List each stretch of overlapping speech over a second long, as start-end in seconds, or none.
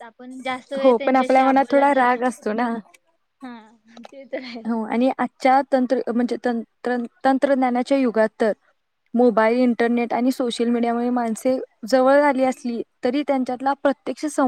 0.8-2.5